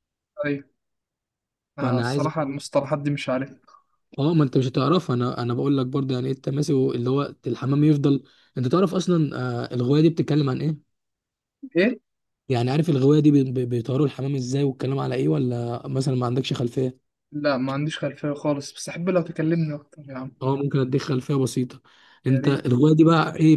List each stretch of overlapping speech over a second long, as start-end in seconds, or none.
none